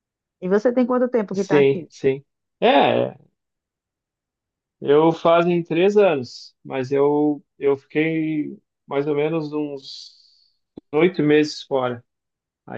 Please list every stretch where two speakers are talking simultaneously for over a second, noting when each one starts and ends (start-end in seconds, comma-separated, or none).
none